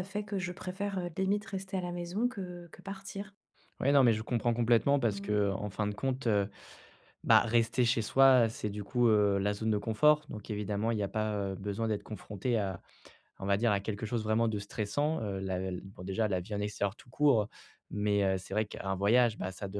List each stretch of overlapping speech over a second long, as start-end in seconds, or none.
none